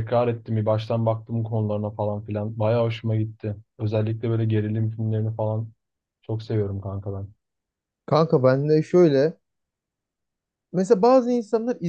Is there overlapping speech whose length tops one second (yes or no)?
no